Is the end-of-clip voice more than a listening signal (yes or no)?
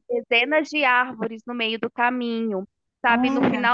no